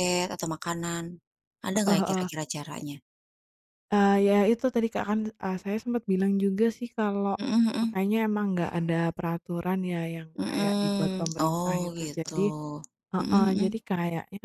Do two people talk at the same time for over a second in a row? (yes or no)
yes